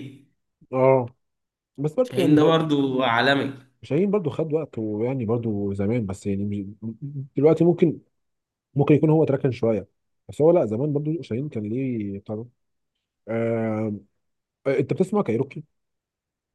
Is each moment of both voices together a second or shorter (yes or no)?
yes